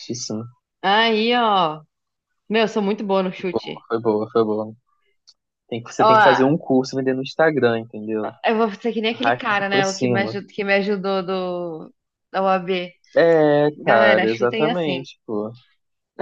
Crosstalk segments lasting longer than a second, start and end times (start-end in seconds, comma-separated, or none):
9.1-10.3, 13.8-15.1